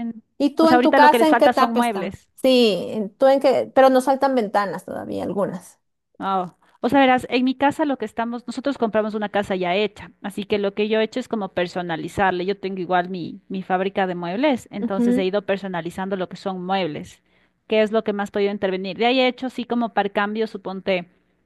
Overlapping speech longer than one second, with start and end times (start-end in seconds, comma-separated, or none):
0.6-2.3